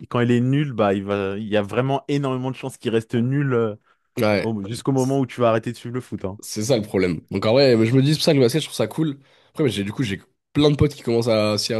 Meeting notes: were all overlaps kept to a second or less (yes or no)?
yes